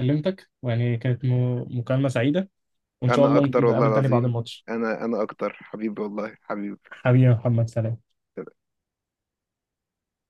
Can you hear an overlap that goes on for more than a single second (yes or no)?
yes